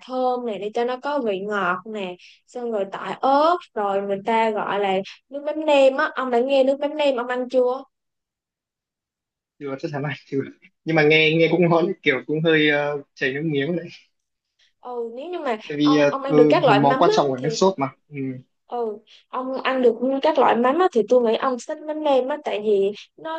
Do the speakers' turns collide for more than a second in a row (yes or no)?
yes